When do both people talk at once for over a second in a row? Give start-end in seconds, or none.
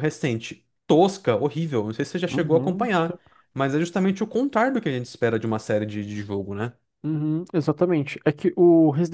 none